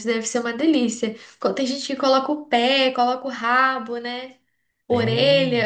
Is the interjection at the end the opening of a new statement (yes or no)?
yes